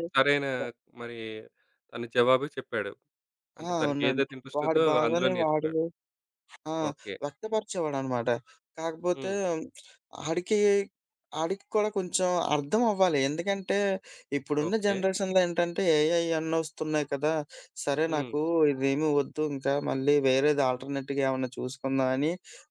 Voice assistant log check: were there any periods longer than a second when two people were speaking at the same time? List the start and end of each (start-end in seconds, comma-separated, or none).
3.7-5.7